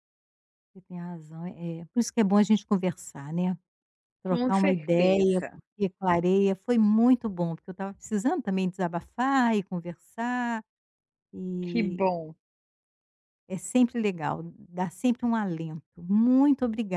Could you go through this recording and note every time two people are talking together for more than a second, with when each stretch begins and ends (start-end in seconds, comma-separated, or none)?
4.3-5.6